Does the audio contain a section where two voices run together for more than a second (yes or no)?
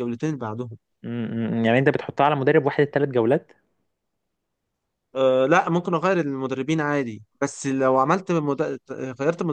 no